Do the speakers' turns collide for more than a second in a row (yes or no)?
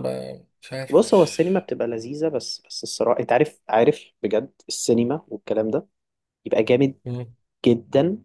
no